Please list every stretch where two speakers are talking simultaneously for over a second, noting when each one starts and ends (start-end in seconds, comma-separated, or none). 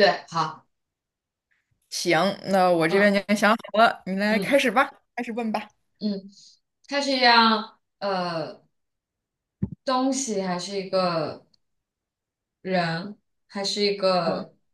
none